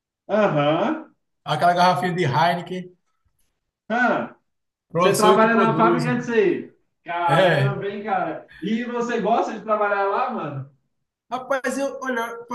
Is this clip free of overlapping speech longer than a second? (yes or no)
no